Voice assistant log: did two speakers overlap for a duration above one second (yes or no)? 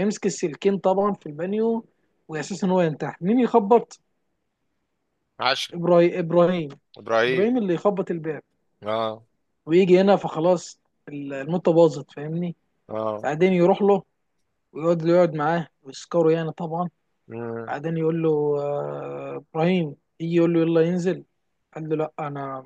no